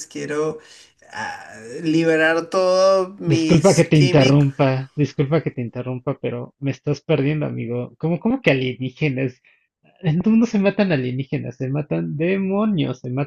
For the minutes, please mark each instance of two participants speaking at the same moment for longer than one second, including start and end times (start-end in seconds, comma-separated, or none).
3.2-4.5